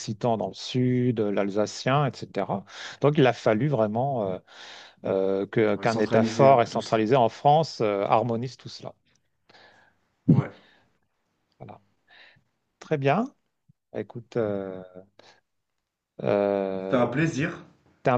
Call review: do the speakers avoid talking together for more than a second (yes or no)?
no